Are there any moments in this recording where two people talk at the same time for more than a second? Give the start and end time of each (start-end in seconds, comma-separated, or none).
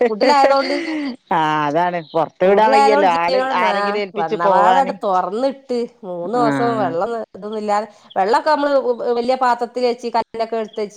2.5-4.9